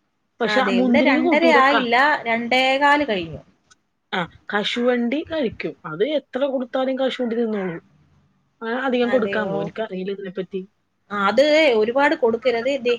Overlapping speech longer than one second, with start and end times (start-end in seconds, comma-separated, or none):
none